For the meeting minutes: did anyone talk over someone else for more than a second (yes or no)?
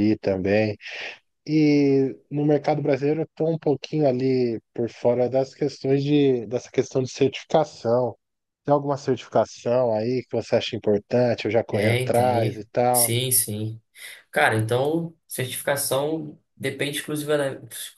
yes